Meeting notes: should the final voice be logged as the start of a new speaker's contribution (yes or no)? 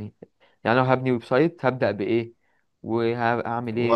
yes